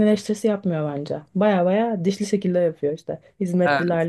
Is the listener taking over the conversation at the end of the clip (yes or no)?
no